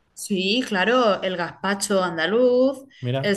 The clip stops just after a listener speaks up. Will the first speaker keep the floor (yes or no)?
yes